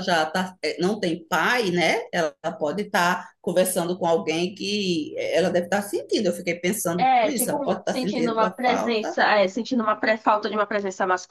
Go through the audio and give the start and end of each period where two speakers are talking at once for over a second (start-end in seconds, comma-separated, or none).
7.0-9.2